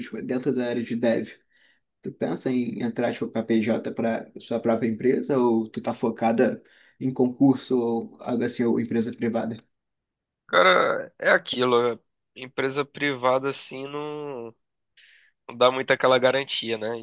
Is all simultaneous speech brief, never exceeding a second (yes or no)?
yes